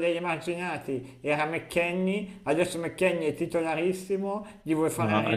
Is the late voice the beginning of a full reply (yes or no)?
no